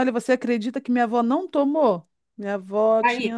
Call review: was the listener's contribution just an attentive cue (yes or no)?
yes